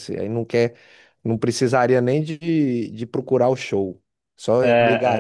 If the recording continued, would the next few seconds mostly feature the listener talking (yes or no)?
no